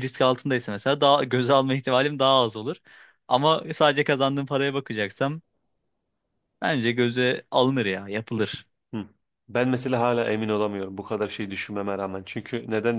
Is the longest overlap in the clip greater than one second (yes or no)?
no